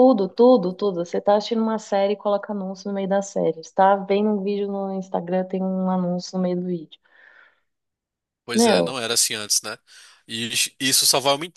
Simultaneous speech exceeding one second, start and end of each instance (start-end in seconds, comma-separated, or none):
none